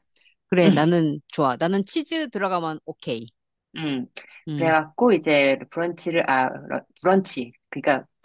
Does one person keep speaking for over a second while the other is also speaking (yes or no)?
no